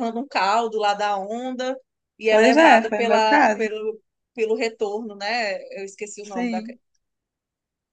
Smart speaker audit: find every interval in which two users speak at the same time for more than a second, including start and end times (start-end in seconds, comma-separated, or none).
2.3-3.7